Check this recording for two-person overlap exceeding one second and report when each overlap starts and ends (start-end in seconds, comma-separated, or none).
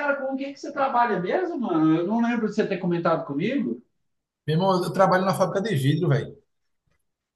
none